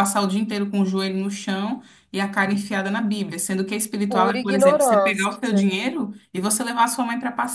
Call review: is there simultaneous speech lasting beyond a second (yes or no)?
yes